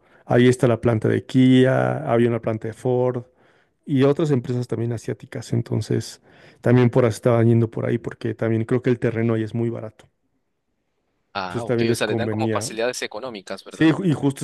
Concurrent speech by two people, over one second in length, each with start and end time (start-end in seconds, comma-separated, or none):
11.5-12.7